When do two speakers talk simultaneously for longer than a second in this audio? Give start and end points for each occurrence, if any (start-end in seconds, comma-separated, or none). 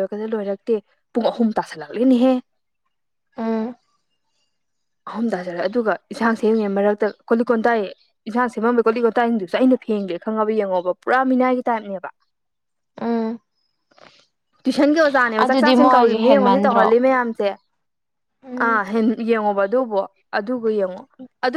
15.4-16.9